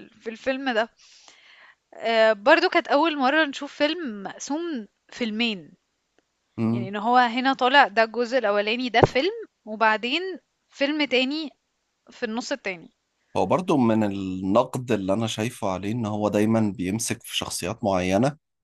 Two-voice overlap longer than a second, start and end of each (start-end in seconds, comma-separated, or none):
none